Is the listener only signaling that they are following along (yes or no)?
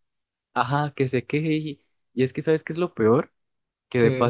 yes